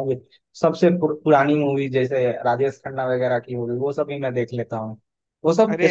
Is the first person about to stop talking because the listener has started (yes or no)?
no